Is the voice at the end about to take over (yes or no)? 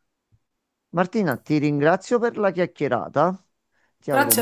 yes